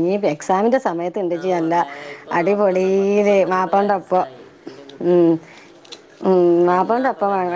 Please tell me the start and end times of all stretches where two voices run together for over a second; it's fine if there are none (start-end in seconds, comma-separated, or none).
2.4-4.2